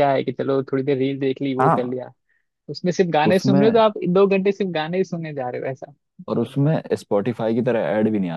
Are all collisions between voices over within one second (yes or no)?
yes